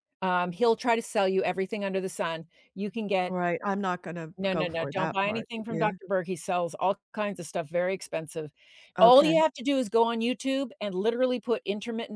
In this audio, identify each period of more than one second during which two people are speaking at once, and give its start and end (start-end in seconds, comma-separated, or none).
4.4-5.9